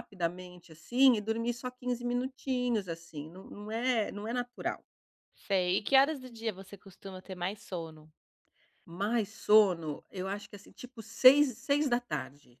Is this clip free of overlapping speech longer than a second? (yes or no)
yes